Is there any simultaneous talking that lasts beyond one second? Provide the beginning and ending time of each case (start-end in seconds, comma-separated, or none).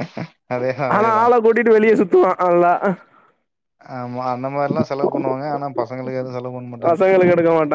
none